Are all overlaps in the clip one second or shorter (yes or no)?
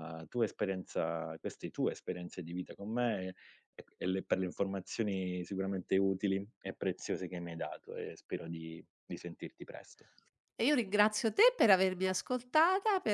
yes